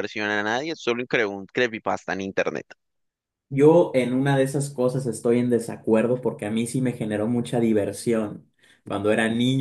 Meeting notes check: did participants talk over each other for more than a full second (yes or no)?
no